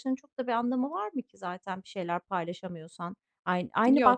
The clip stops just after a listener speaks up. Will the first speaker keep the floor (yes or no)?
yes